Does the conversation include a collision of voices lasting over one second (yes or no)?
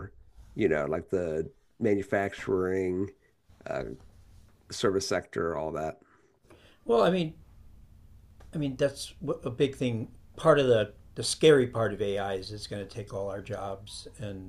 no